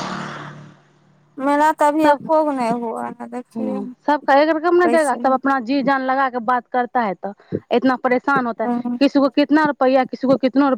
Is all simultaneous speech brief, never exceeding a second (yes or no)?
yes